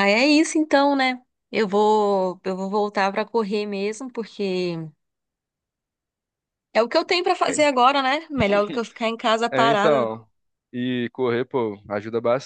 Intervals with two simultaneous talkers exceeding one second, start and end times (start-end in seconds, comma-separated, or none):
none